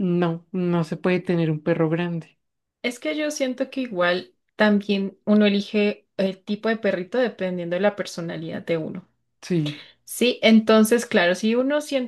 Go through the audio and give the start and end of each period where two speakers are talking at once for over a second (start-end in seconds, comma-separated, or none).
none